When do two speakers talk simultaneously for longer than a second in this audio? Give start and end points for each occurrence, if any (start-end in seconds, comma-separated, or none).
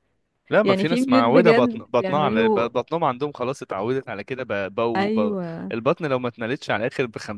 0.6-2.7